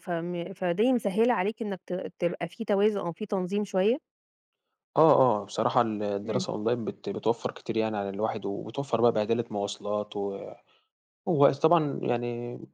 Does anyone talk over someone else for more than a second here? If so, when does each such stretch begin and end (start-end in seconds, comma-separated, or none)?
none